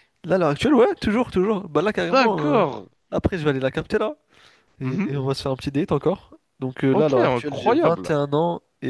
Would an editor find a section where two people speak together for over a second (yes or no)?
yes